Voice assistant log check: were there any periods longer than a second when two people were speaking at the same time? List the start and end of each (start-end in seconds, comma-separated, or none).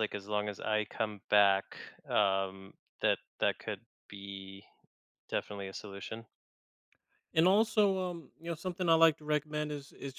none